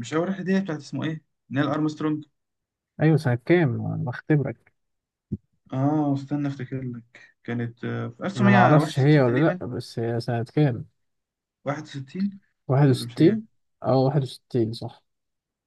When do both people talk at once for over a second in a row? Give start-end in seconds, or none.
8.4-9.6